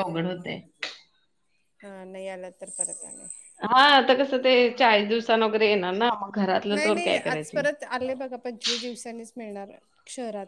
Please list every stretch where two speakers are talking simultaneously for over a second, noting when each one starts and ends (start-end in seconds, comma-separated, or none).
none